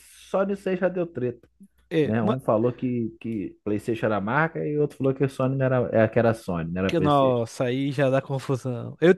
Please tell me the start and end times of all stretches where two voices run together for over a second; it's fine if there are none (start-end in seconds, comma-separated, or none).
none